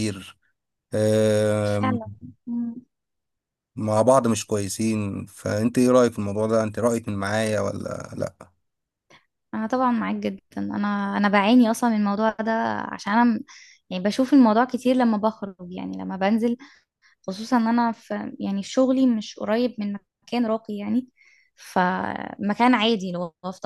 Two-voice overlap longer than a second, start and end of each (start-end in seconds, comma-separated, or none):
none